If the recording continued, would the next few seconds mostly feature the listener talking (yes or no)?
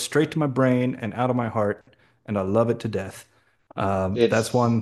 no